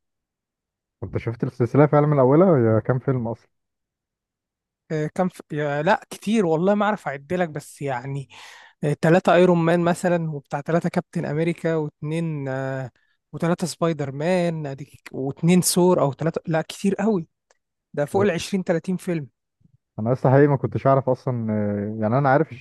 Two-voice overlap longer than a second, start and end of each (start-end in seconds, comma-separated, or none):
none